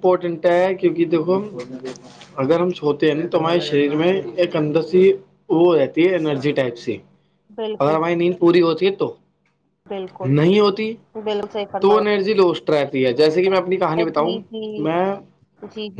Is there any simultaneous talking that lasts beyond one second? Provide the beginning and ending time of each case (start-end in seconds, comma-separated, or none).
none